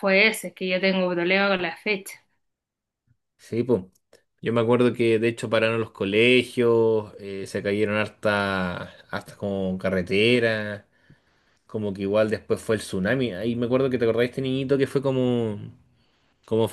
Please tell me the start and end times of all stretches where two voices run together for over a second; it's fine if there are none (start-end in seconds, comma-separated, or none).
none